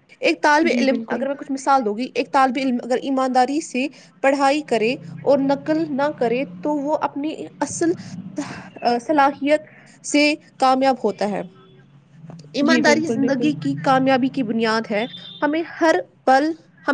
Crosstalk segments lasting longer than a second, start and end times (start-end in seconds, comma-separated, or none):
12.7-14.1